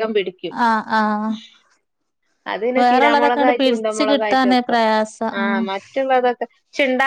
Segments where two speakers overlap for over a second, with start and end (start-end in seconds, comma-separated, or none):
2.8-4.7